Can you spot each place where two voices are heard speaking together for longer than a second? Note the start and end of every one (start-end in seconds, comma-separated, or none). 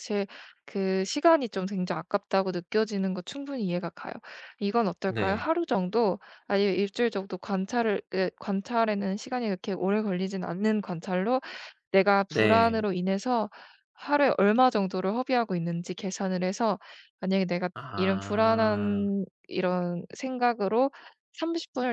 17.7-19.1